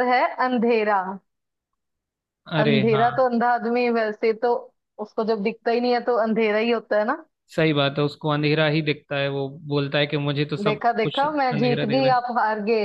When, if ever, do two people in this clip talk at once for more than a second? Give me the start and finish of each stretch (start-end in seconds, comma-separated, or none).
10.6-12.2